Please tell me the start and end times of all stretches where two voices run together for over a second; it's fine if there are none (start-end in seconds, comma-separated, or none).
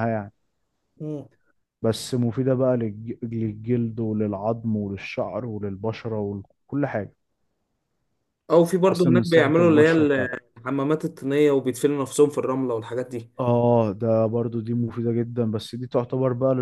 8.8-10.1